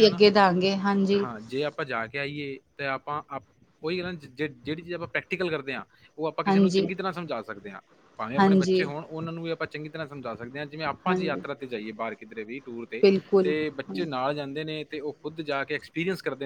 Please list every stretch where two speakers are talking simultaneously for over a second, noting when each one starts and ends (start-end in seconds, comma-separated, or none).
none